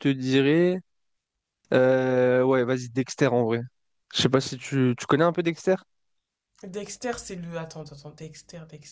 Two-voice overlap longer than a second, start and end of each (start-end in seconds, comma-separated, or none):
none